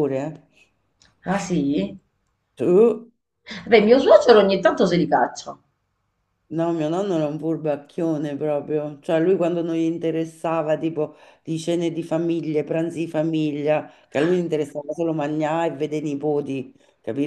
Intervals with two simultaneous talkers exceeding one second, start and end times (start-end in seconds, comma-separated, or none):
none